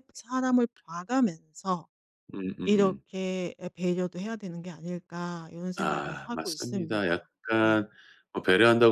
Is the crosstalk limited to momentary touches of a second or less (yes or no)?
no